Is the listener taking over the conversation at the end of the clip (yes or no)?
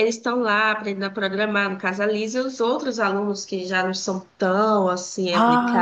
yes